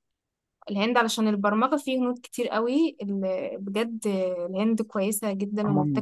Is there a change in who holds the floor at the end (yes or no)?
yes